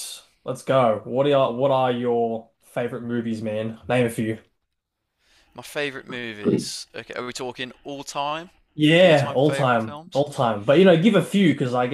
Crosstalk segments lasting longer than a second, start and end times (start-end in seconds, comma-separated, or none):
9.0-10.3